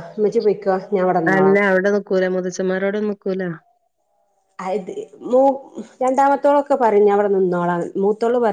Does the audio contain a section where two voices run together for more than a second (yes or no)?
no